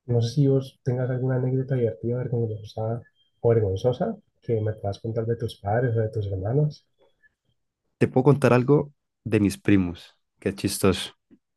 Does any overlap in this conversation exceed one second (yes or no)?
no